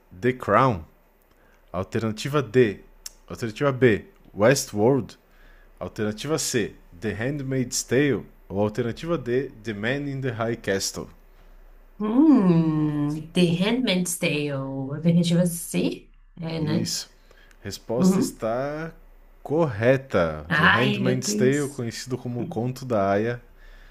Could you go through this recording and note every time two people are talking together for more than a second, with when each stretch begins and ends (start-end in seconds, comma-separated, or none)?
20.5-21.8